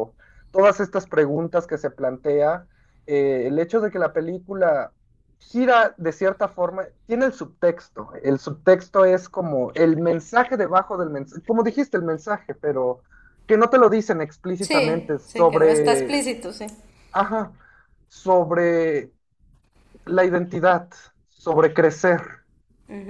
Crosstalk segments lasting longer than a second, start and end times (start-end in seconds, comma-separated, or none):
14.6-16.2